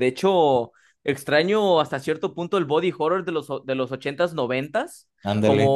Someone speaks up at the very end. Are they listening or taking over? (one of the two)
listening